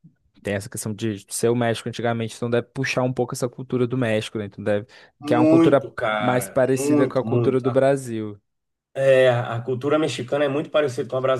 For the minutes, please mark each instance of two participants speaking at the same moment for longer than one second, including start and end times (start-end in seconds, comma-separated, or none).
5.2-7.8